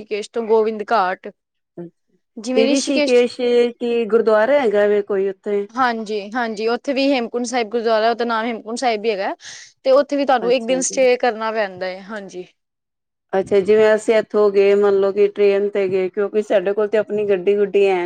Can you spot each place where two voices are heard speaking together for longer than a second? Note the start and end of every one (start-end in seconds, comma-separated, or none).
none